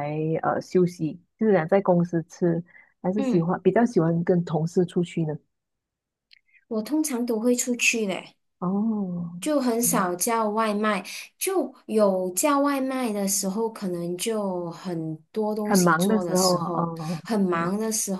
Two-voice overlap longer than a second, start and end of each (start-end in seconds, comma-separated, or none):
15.6-17.7